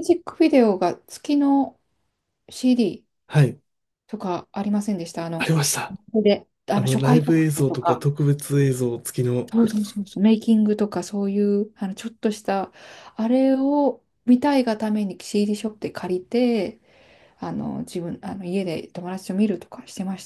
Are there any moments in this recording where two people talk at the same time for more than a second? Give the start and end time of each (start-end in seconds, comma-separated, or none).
6.7-8.1